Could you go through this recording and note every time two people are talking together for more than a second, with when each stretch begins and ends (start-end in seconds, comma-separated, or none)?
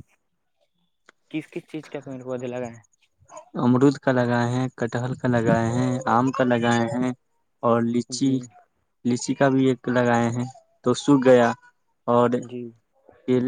none